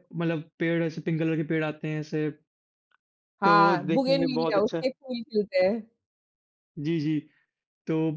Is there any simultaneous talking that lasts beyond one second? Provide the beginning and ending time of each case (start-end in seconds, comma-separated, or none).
3.4-4.8